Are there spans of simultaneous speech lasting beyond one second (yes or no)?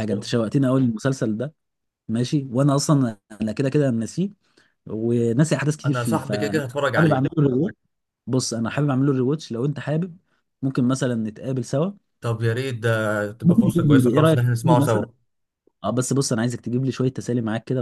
yes